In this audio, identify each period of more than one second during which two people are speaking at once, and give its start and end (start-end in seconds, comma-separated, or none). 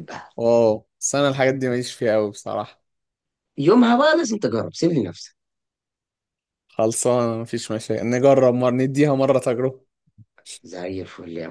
none